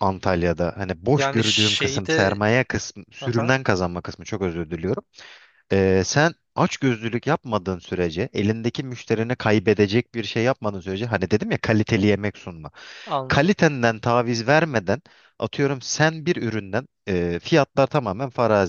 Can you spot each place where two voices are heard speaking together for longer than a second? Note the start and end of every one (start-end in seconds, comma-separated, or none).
1.2-2.4